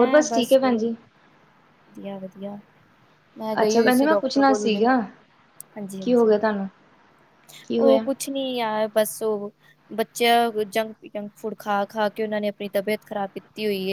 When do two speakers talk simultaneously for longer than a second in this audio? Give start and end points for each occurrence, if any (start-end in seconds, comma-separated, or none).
3.6-4.8